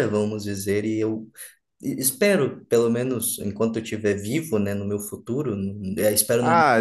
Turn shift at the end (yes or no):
yes